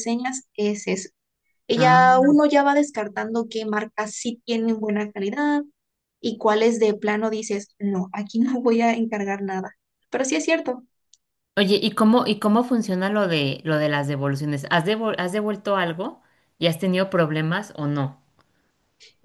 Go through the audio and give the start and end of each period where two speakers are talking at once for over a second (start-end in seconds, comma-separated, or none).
none